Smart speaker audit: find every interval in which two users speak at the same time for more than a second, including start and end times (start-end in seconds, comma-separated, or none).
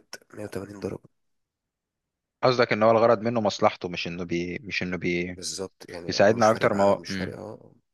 6.1-7.4